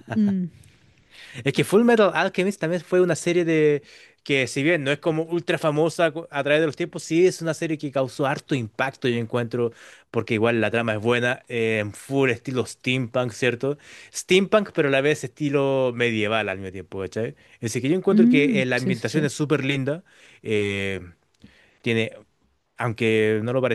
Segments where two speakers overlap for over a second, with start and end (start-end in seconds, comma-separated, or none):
18.1-19.3